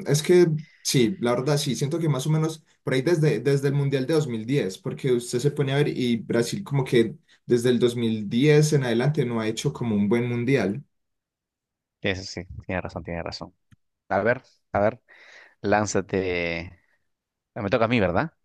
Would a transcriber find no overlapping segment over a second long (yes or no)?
yes